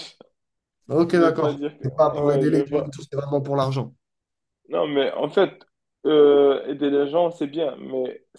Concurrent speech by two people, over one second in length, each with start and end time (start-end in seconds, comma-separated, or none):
1.1-3.0